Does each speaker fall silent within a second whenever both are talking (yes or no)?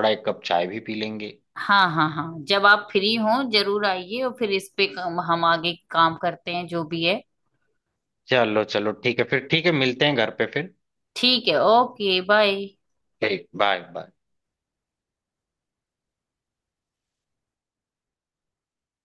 yes